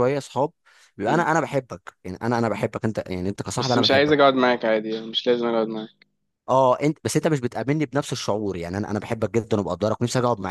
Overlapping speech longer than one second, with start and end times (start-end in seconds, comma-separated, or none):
none